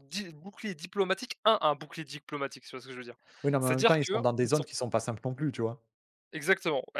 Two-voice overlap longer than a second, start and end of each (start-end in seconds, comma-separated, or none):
none